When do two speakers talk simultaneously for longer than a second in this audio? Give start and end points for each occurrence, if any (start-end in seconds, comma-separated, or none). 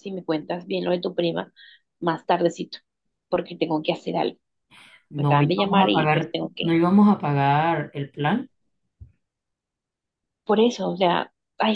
5.2-6.8